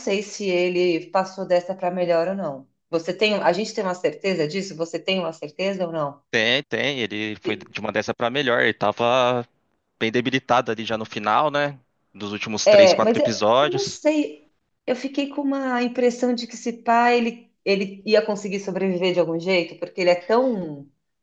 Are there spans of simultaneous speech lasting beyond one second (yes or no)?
yes